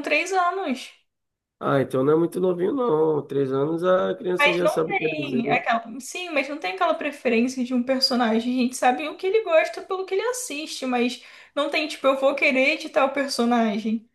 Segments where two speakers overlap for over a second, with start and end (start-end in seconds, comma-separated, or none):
4.4-5.6